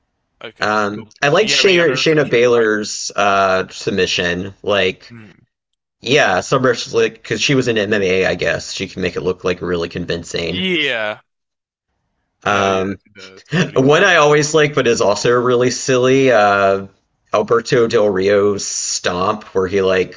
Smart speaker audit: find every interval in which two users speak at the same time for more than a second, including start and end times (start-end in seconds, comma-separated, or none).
0.6-2.7